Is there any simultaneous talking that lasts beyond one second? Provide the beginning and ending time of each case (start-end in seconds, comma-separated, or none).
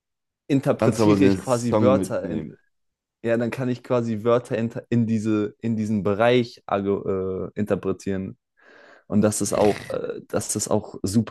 0.8-2.5